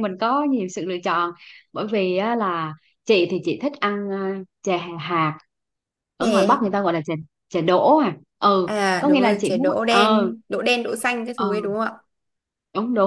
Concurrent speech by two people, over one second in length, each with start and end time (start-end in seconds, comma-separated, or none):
8.7-10.3